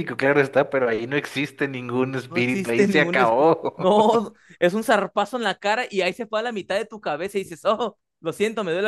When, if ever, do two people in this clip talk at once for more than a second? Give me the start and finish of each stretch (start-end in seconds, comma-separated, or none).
2.3-3.8